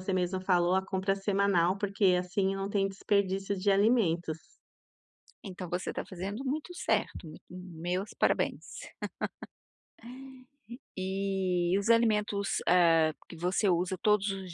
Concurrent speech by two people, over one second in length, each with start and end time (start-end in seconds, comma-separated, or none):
none